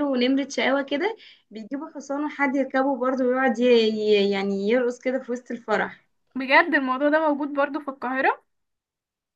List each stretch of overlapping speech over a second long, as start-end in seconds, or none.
none